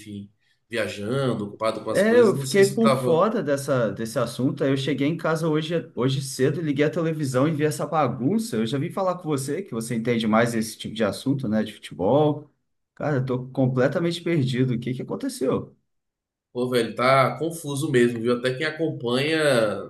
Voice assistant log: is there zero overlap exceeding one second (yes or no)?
no